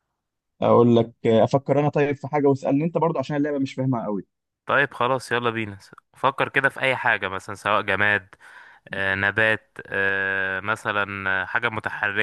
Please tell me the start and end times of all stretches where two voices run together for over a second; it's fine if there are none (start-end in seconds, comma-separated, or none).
none